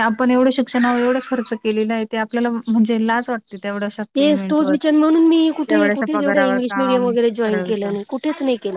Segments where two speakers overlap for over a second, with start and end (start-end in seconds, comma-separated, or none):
5.7-7.9